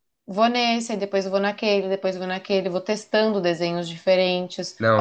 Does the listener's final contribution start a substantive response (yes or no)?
no